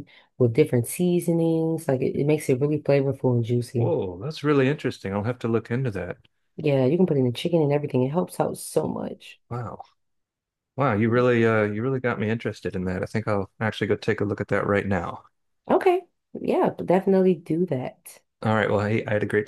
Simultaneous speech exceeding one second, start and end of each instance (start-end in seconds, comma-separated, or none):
none